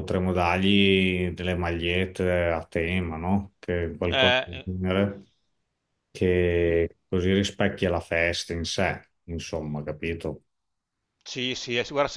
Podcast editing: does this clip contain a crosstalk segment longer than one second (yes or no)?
no